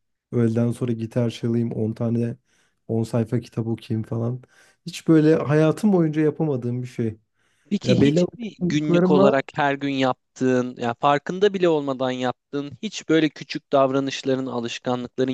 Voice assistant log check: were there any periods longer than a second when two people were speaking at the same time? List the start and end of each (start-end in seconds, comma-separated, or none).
7.8-9.4